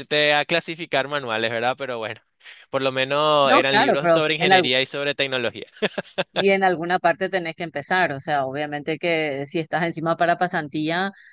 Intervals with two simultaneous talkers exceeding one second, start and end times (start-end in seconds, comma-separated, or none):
3.4-4.7